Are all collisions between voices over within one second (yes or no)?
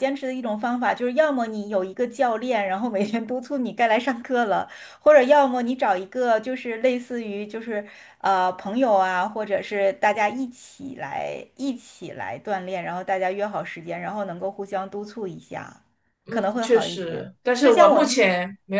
no